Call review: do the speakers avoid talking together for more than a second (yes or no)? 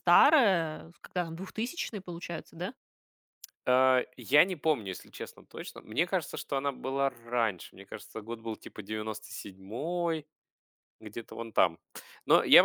yes